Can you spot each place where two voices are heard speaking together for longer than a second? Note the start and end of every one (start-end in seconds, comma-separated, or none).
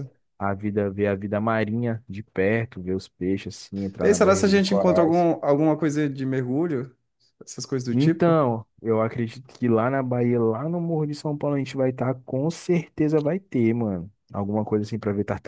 4.0-5.3